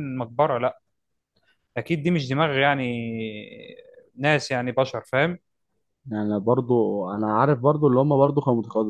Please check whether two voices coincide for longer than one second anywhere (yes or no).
no